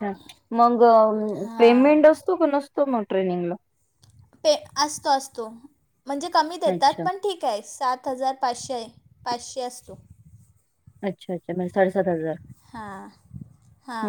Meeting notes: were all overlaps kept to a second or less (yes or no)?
yes